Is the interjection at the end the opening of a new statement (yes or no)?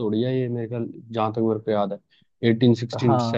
yes